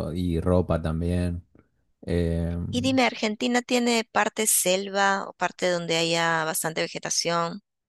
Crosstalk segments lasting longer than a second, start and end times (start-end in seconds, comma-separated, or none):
none